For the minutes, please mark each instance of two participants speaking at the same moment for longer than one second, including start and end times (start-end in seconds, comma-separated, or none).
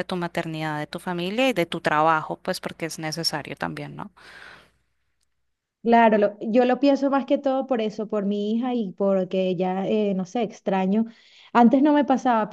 none